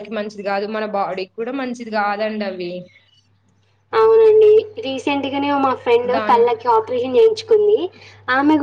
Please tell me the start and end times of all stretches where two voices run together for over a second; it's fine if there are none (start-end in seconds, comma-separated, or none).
none